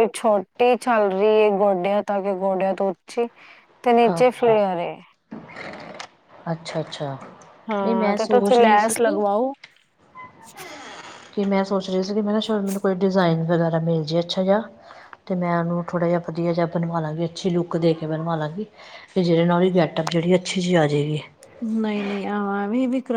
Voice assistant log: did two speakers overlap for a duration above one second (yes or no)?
yes